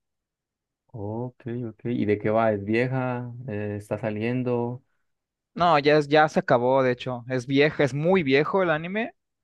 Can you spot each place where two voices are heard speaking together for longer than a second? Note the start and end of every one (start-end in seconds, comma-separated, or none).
none